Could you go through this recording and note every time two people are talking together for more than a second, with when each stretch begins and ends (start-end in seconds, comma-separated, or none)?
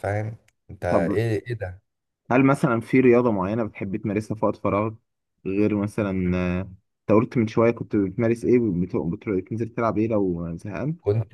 none